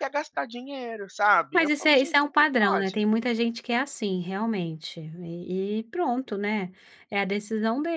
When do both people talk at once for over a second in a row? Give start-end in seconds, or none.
1.5-3.0